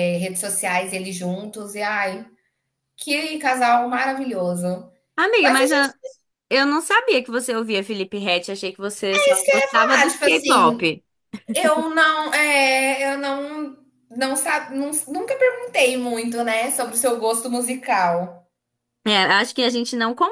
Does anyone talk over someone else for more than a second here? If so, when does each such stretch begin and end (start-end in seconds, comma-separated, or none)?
9.1-10.9